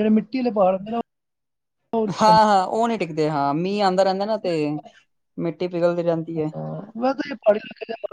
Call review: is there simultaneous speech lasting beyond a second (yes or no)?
no